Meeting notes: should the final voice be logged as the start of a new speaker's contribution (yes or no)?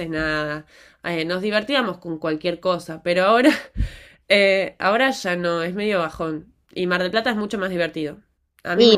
yes